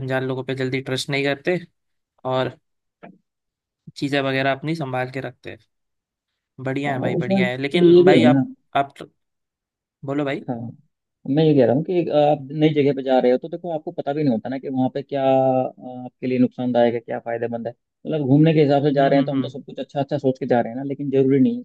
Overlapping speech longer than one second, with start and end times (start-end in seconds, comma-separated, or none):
6.9-8.4